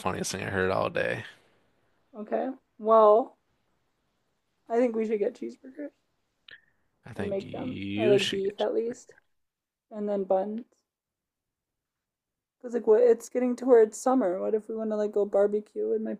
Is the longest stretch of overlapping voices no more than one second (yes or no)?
no